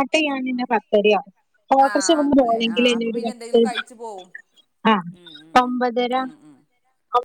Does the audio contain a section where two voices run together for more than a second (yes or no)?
yes